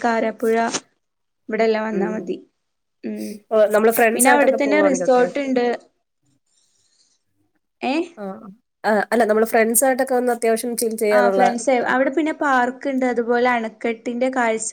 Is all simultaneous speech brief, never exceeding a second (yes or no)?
no